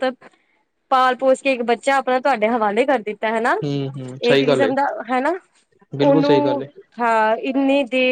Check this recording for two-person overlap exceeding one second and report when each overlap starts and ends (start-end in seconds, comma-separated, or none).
none